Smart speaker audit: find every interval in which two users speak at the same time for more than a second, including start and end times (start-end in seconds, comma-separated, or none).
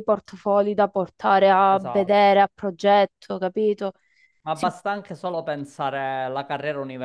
none